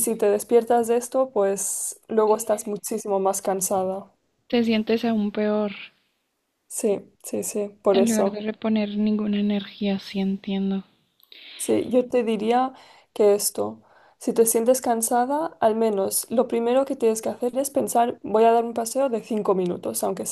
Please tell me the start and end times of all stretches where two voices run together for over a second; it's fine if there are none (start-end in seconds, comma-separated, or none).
none